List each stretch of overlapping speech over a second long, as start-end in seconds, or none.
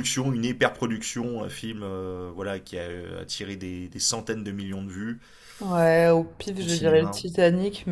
none